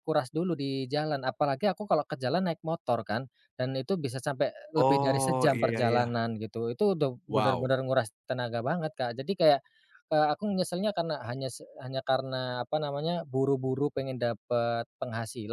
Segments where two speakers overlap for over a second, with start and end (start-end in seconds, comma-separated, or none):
4.8-6.1